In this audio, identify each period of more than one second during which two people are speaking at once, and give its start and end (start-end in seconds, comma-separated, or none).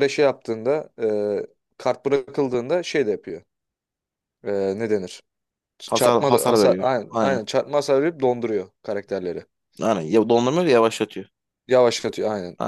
5.9-7.4